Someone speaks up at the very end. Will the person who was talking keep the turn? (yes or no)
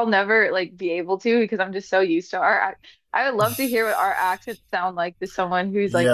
no